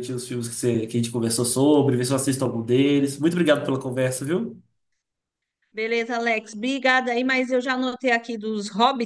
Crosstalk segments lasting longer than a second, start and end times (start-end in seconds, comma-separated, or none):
none